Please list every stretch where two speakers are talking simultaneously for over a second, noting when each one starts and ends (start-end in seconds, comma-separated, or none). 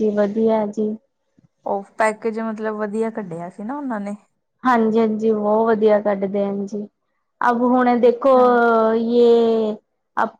none